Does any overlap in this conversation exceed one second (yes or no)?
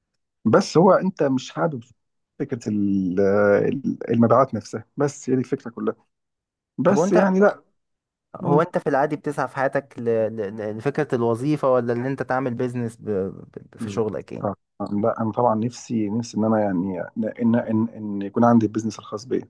no